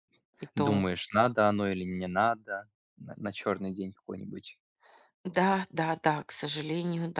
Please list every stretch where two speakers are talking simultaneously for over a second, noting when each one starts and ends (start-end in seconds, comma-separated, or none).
none